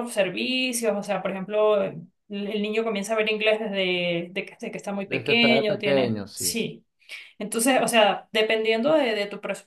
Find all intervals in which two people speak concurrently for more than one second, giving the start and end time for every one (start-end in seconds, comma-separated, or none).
5.1-6.6